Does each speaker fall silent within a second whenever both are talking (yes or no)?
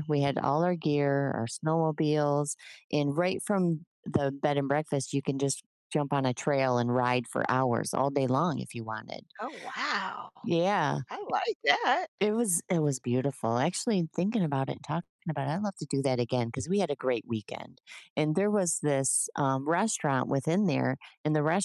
yes